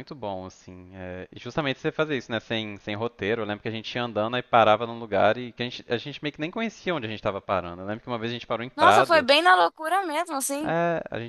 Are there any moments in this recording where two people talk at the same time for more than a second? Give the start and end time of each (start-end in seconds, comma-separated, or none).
none